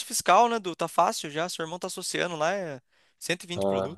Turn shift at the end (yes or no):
no